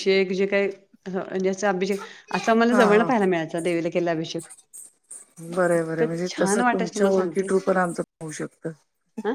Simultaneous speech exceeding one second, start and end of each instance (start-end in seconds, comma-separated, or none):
5.7-7.5